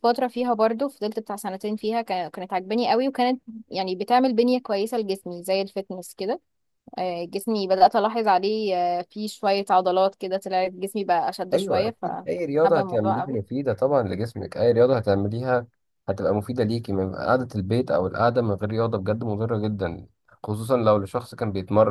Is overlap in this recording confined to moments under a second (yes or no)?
no